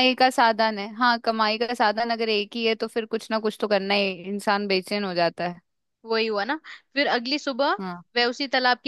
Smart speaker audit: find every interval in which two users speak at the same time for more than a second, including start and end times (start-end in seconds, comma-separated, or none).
none